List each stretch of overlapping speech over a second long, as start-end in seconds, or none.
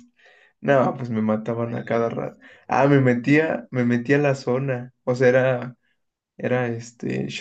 1.5-3.2